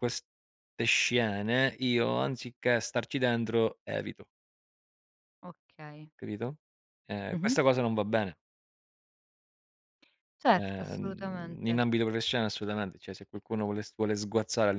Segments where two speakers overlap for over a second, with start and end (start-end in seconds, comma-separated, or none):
10.5-11.8